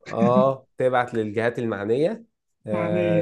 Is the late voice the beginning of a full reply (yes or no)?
no